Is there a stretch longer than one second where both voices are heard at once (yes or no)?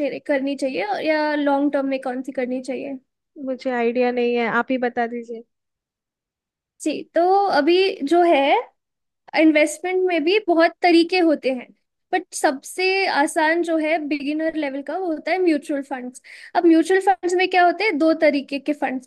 no